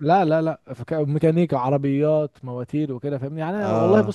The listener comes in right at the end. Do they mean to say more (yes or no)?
no